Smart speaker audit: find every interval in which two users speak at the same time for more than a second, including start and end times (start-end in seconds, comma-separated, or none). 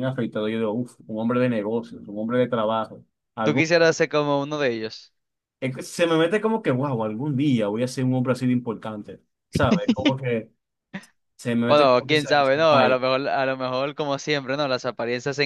11.7-13.0